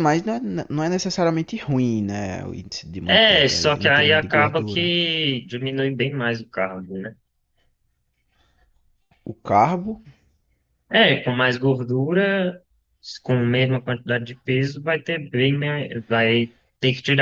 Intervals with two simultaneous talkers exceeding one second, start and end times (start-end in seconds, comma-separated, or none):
3.0-4.9